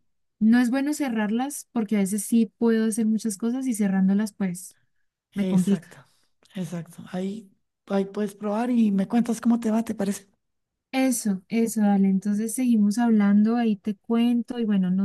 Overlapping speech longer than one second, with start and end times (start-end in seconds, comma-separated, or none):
none